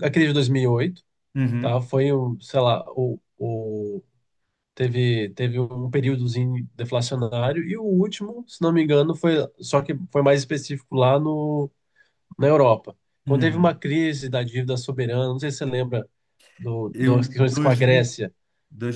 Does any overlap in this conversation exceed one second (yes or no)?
yes